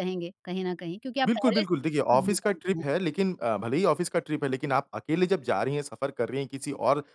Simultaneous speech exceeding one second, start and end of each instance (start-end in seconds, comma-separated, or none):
1.3-2.9